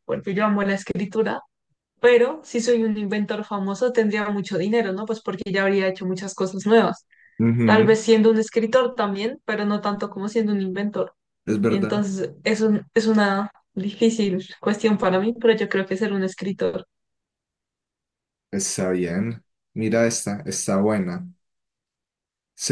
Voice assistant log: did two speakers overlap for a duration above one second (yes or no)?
no